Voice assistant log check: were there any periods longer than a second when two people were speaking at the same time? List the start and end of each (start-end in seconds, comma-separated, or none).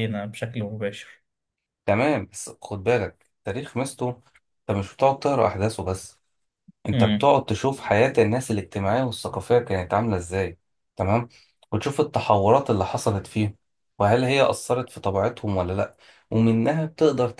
none